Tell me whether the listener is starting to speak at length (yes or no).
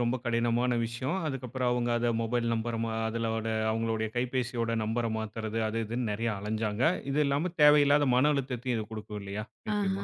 yes